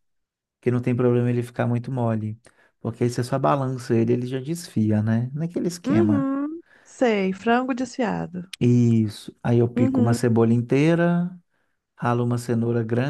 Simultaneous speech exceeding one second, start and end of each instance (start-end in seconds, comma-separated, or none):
none